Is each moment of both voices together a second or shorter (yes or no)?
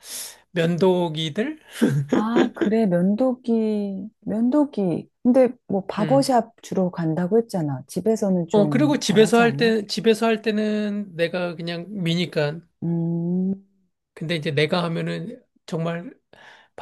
no